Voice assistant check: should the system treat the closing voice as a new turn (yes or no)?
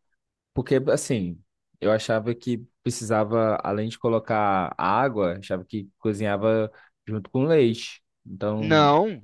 yes